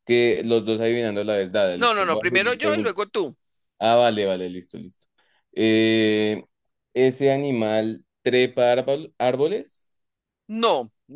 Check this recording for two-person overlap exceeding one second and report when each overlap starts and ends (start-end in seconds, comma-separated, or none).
1.8-3.0